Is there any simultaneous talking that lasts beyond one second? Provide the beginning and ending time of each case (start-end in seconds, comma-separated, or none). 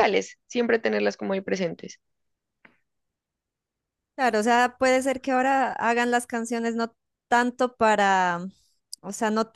none